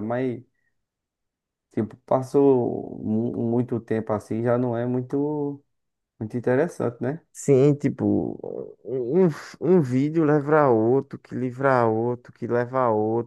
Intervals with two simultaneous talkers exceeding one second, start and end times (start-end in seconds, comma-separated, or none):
none